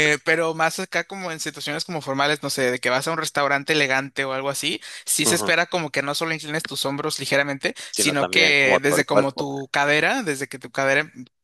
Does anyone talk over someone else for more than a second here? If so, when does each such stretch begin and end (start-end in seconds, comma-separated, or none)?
7.8-9.4